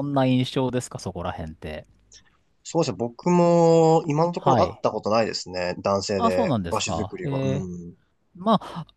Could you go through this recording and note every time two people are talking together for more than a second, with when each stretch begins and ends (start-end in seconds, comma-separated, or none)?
6.2-7.8